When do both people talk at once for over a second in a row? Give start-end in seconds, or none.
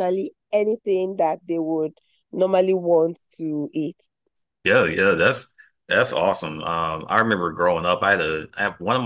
none